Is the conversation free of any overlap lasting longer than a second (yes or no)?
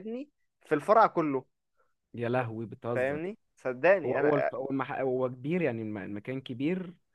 yes